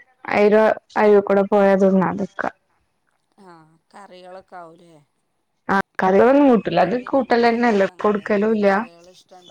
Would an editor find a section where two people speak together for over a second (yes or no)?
yes